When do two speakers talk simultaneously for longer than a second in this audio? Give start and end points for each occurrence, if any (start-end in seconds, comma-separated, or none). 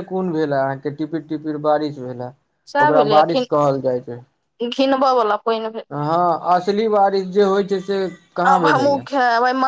none